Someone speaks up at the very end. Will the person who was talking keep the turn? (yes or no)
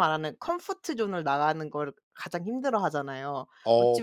yes